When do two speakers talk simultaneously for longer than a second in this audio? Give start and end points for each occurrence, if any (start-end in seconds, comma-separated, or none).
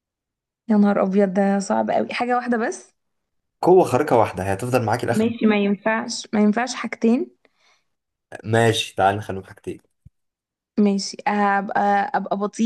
none